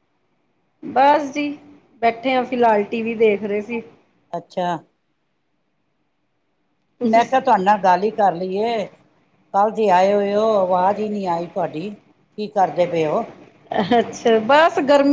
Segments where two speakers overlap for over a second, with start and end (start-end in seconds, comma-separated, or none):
none